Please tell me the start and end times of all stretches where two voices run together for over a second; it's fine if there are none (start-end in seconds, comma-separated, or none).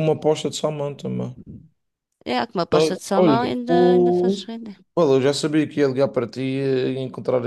2.7-4.5